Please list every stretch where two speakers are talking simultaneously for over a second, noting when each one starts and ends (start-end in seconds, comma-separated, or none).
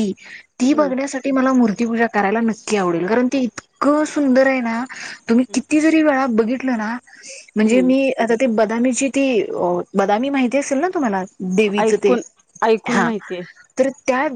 none